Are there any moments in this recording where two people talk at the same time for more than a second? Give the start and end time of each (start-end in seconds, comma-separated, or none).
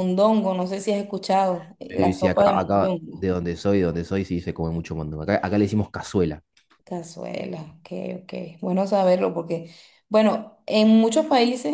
1.9-3.3